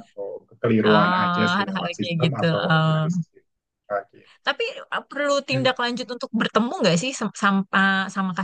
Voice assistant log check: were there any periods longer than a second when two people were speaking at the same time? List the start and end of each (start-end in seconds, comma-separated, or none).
0.8-3.0